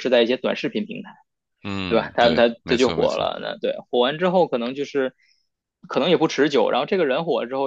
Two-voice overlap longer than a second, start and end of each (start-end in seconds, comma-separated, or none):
1.9-3.3